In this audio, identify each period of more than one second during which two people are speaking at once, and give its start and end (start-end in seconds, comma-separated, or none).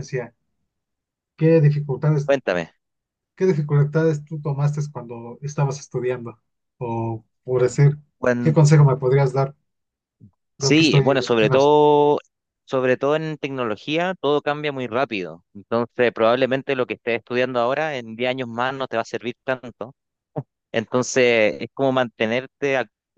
10.6-11.8